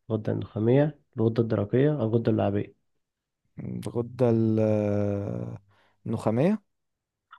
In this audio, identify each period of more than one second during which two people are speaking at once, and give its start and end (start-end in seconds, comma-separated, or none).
none